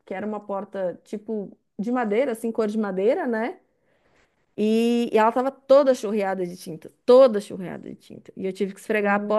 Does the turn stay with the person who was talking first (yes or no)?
yes